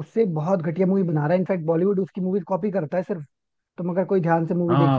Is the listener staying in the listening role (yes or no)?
no